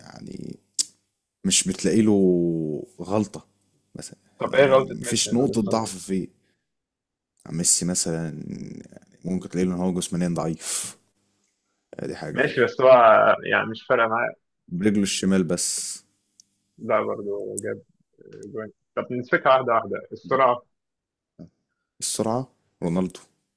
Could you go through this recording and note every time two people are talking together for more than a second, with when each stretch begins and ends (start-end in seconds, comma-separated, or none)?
4.4-5.9